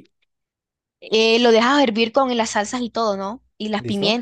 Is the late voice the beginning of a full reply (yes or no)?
no